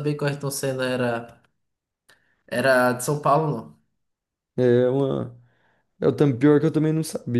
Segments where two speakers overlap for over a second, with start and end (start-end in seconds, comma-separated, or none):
none